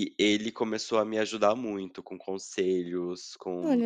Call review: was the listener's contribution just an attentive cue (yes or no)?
yes